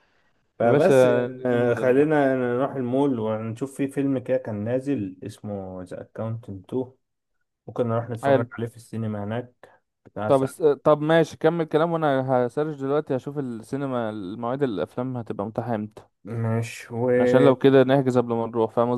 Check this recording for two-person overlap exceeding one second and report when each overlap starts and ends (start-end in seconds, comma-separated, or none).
0.6-2.1